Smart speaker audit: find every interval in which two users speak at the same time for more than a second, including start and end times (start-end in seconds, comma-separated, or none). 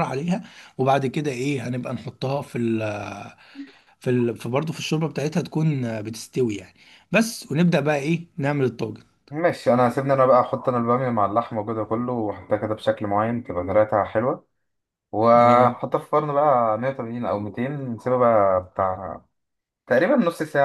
none